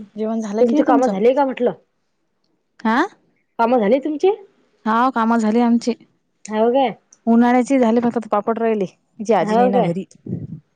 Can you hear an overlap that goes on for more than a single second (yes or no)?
no